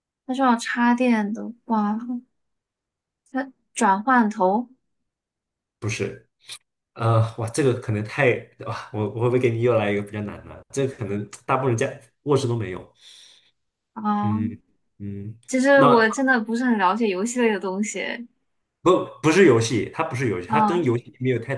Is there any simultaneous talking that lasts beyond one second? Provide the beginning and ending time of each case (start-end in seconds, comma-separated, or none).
none